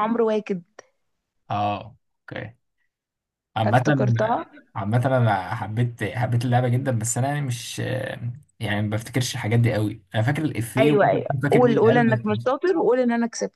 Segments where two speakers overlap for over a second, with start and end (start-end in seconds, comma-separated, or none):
10.8-12.5